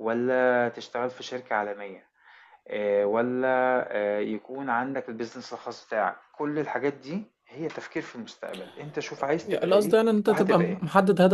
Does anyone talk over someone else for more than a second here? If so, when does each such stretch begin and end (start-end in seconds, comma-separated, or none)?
9.4-10.8